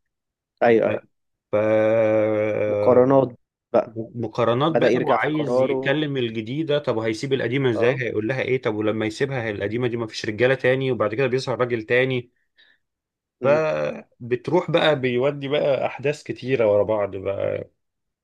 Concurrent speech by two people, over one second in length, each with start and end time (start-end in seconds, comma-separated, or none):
4.7-6.0